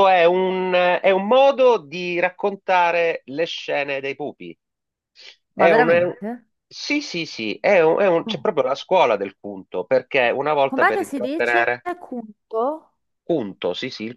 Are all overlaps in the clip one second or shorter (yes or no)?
no